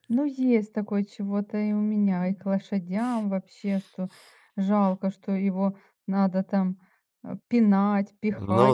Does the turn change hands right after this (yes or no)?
yes